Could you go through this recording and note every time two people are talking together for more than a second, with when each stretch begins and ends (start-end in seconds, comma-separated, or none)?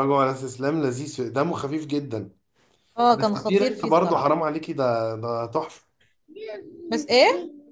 3.1-4.3